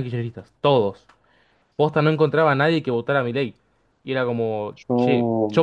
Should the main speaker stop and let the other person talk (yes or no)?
no